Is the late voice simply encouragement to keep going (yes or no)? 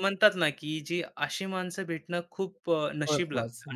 yes